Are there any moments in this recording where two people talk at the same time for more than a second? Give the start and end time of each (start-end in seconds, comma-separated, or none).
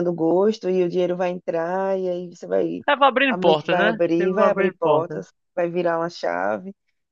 3.3-5.2